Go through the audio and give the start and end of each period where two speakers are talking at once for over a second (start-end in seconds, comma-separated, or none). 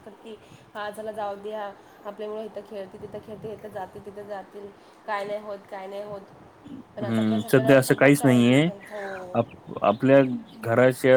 7.0-8.7